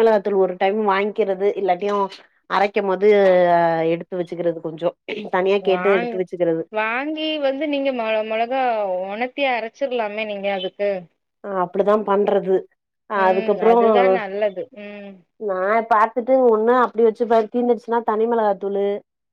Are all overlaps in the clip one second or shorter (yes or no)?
yes